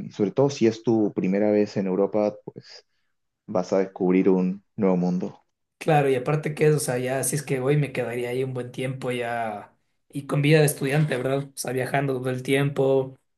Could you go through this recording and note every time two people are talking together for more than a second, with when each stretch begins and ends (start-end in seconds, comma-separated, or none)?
none